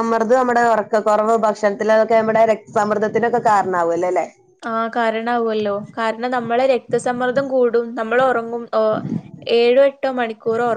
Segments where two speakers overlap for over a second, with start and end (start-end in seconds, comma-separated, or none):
none